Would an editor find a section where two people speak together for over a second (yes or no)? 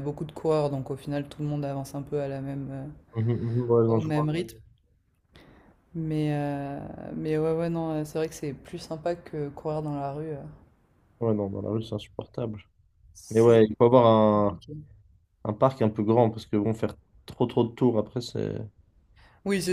no